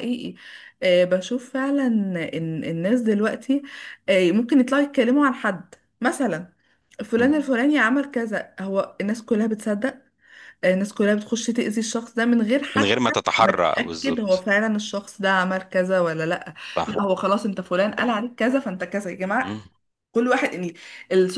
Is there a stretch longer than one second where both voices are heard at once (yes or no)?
yes